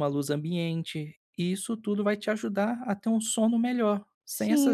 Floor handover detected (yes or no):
yes